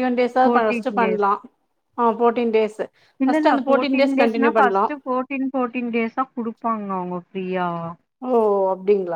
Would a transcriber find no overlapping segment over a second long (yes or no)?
no